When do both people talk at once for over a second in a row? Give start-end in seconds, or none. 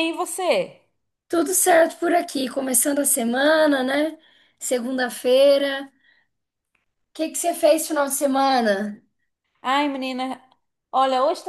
none